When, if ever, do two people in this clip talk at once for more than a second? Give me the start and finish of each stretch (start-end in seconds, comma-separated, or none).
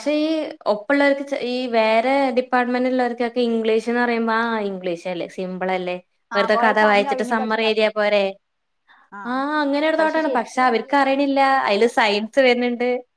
6.4-8.2, 10.3-12.3